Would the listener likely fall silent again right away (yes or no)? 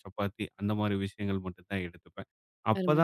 yes